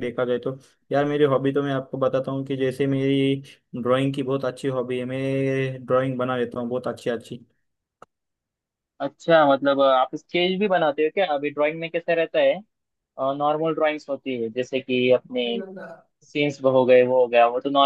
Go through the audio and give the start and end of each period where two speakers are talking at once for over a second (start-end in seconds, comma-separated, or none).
none